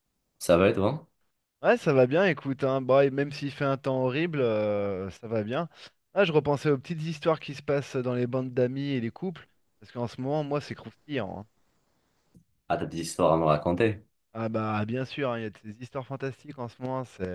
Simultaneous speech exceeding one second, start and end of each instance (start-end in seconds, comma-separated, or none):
none